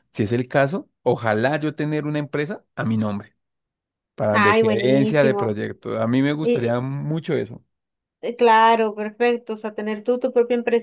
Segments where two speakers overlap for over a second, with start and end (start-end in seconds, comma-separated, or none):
4.3-5.6